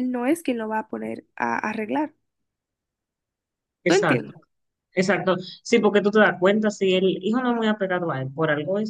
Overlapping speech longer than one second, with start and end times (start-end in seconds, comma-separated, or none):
none